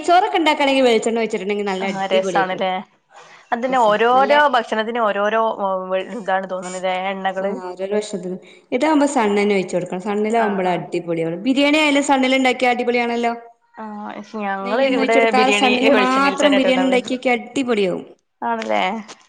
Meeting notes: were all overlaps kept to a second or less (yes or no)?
no